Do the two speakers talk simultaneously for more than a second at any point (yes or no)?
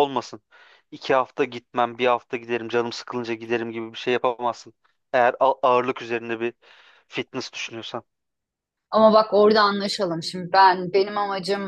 no